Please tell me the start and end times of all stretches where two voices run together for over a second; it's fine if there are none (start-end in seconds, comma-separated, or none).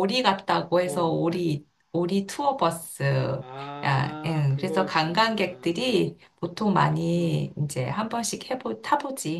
3.8-5.8